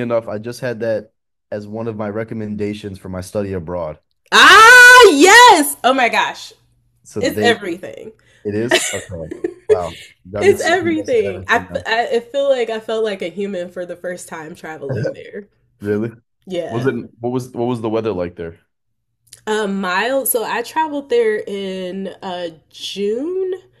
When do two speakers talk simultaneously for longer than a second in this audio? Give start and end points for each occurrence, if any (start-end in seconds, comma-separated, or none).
10.4-11.8